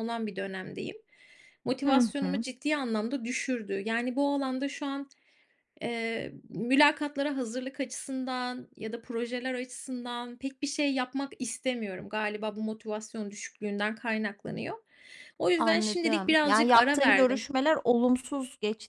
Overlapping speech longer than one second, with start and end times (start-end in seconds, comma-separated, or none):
15.6-17.5